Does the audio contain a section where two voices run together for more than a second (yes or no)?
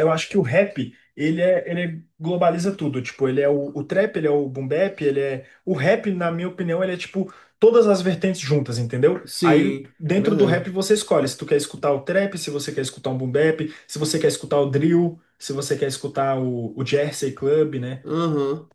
yes